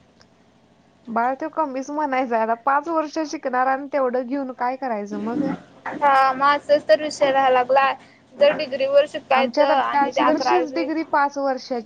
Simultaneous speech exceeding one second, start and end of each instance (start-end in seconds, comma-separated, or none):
9.4-10.7